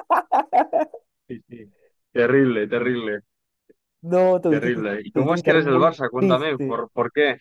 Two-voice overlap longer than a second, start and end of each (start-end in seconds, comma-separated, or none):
4.5-6.8